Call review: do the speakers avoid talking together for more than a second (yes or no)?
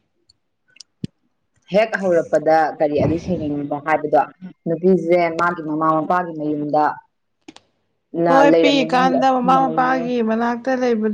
no